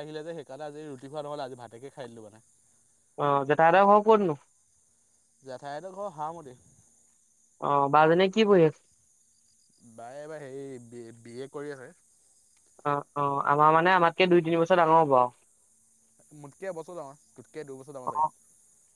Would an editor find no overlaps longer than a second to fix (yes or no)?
yes